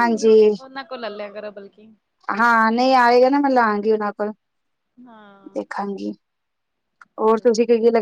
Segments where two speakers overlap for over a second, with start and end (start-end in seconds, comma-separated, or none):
none